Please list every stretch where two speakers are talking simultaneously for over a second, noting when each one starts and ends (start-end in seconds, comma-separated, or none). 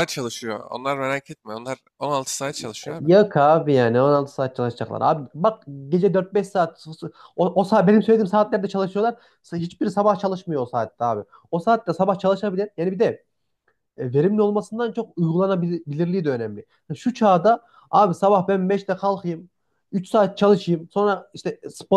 none